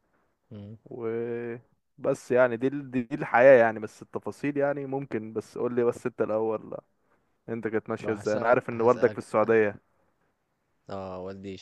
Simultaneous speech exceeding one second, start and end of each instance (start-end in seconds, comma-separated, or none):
8.0-9.2